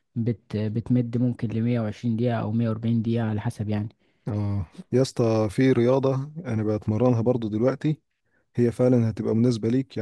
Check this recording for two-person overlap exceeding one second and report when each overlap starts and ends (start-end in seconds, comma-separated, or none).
none